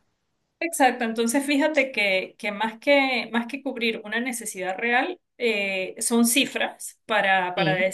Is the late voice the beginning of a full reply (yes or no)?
no